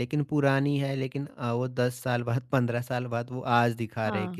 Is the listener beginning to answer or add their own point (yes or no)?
yes